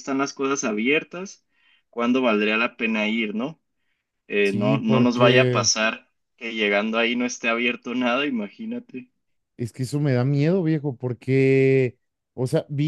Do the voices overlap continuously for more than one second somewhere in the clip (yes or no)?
yes